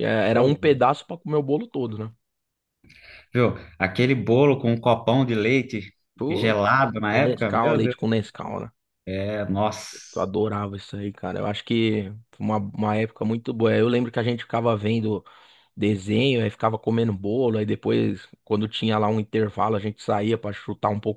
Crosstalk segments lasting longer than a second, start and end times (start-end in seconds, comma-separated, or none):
6.3-8.0